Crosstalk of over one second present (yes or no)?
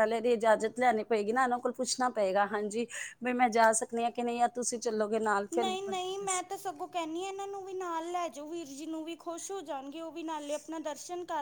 no